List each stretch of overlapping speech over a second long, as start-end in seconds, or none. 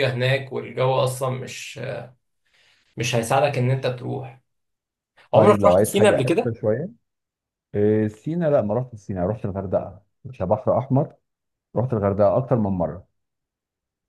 5.3-6.6